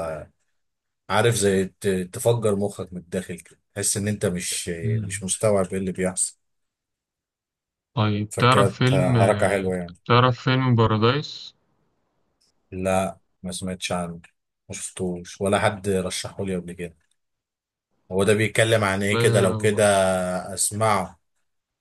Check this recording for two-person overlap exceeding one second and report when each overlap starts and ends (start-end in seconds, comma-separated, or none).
8.3-10.0